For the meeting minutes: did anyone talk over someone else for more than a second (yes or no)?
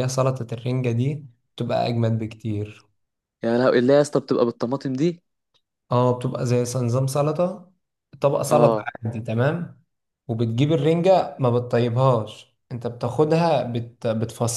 no